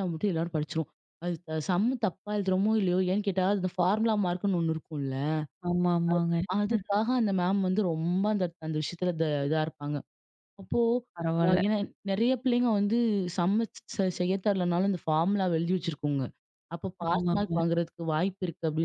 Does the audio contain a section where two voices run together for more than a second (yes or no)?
no